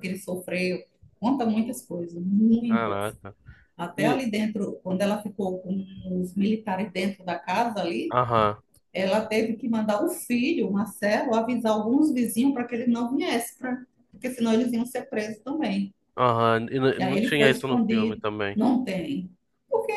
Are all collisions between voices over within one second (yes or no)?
no